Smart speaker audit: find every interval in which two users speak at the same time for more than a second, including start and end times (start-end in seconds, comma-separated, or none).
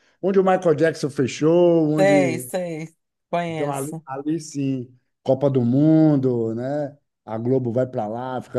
none